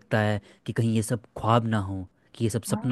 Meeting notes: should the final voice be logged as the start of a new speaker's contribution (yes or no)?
no